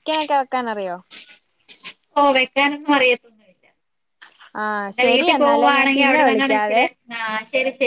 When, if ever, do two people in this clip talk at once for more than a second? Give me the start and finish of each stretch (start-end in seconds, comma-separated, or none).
4.9-6.8